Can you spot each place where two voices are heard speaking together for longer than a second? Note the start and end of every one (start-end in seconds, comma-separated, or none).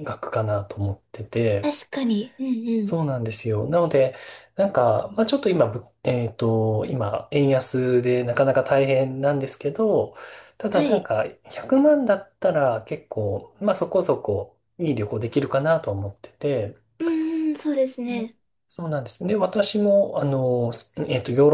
none